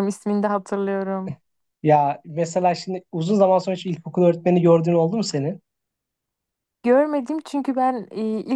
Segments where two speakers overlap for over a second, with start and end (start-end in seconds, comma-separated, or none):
none